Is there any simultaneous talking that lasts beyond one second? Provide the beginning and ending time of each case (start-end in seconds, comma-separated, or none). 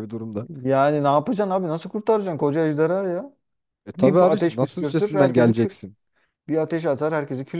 3.9-5.8